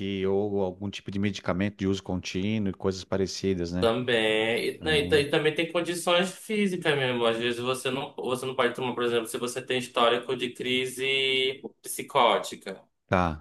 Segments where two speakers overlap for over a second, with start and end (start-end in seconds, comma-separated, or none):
none